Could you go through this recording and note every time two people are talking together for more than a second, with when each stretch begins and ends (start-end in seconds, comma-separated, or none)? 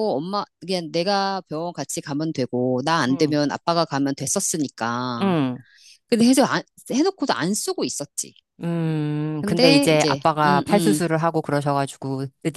9.4-11.0